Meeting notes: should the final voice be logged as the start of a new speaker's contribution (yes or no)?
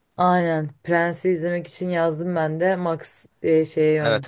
yes